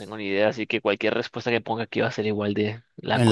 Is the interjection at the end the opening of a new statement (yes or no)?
yes